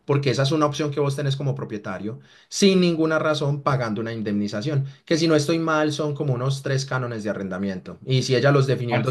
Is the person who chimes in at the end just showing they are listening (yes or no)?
yes